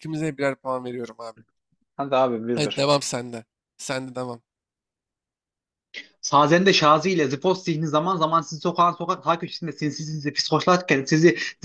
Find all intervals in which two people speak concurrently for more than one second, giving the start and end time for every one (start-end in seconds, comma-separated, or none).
none